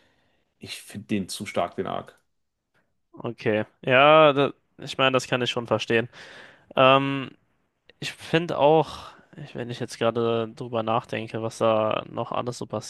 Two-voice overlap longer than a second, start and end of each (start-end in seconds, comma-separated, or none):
none